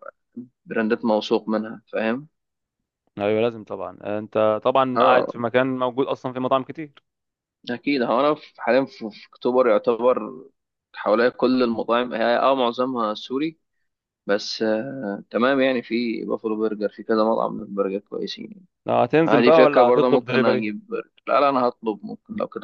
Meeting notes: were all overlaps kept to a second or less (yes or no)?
no